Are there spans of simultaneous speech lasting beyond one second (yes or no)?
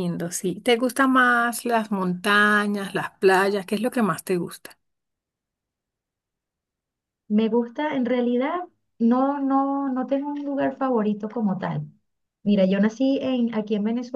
no